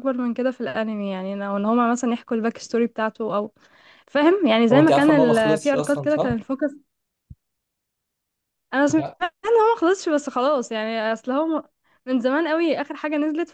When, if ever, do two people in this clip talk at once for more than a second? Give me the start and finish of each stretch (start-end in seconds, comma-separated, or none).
4.7-6.4